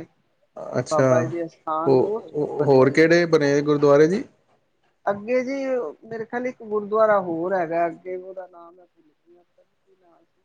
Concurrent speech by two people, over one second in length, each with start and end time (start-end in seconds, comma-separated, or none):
none